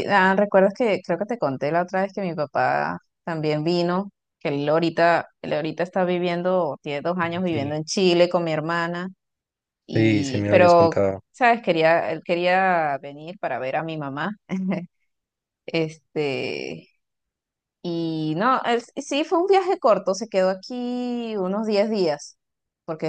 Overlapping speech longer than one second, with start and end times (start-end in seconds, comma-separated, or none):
9.9-11.2